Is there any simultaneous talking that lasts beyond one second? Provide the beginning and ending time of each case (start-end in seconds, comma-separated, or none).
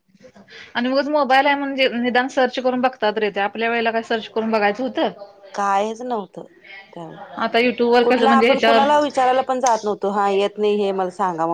8.0-9.3